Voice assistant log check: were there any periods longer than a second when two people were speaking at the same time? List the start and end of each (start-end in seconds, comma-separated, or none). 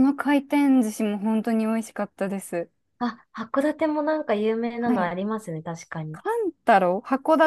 none